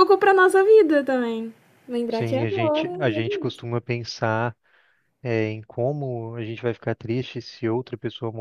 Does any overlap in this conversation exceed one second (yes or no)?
yes